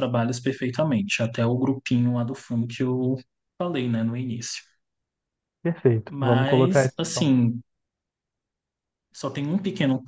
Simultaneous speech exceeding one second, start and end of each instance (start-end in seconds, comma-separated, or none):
6.1-7.3